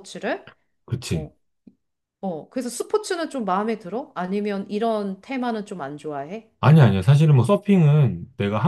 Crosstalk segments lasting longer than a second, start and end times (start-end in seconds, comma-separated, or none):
none